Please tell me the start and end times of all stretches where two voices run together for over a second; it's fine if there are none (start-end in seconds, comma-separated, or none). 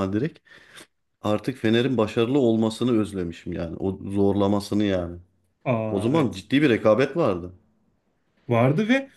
none